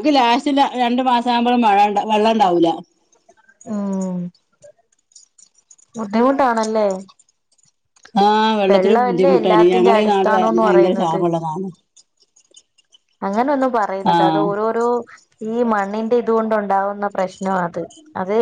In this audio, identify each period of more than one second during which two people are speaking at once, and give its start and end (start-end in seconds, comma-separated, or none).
8.7-11.2